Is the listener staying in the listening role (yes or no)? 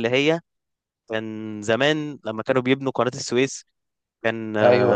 yes